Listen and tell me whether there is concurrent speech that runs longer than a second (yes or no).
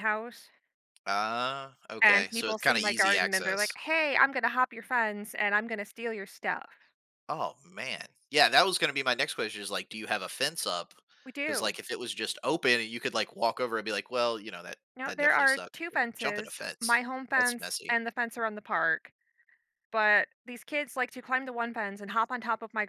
yes